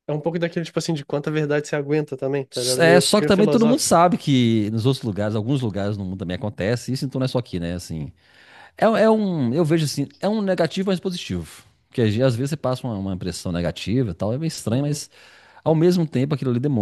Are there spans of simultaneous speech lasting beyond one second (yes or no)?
yes